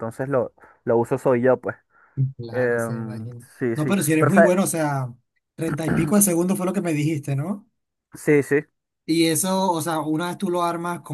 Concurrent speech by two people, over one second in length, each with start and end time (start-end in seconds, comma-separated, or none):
2.5-4.5